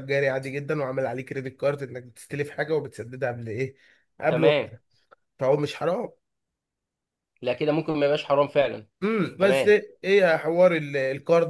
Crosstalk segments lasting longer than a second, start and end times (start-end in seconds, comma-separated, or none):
none